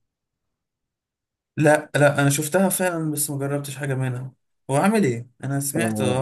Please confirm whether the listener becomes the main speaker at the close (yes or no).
yes